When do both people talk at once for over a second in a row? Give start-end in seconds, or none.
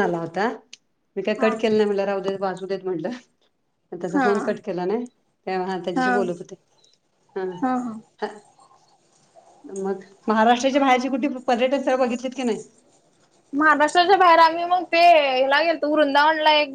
none